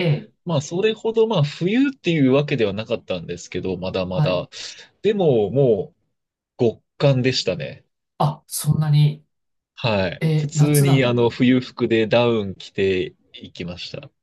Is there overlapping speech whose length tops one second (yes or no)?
yes